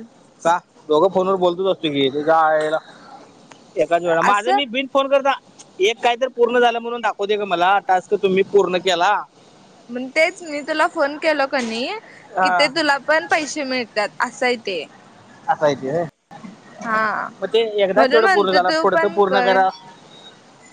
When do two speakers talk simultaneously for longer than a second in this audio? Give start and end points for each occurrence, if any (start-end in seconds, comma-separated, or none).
17.9-19.6